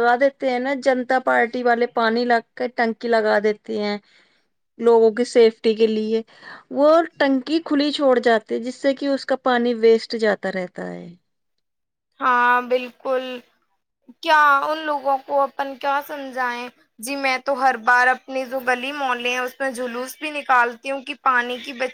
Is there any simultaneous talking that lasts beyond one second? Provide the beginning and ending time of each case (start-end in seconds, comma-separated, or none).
none